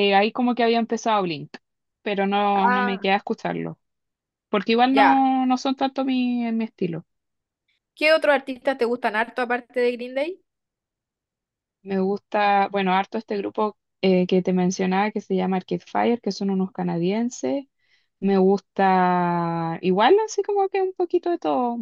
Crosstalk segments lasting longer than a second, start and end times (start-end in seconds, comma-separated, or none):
none